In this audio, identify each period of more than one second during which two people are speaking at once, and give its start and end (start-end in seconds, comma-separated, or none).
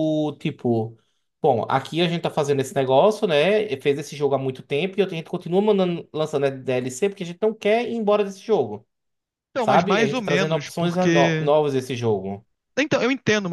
9.6-11.5